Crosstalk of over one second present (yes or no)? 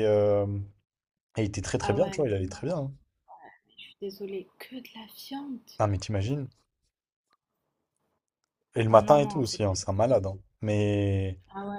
yes